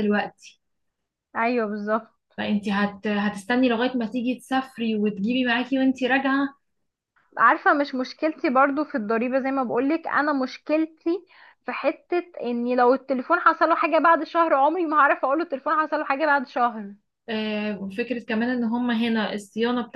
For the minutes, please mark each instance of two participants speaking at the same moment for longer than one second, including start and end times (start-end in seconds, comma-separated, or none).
none